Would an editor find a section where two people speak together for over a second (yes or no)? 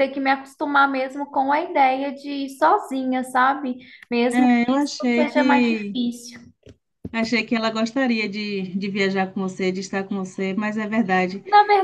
yes